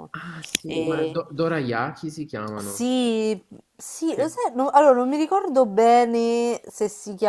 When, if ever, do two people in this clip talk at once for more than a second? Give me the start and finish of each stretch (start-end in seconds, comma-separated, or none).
none